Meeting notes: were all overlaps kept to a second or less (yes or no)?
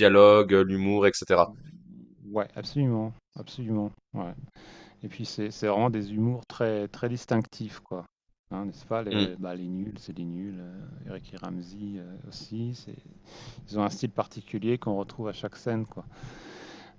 yes